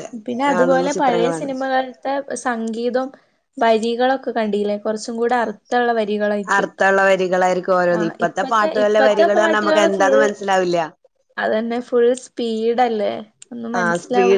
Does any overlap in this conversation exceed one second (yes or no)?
yes